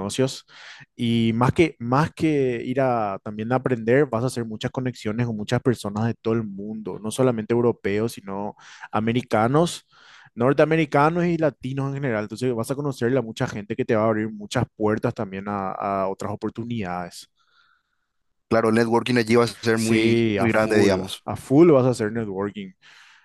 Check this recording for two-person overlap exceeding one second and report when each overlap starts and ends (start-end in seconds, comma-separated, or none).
19.7-21.2